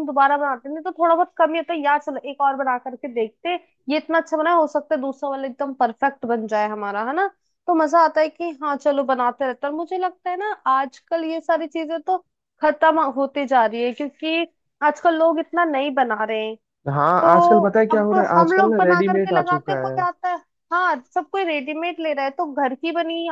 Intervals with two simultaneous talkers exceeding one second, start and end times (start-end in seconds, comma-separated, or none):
17.2-20.0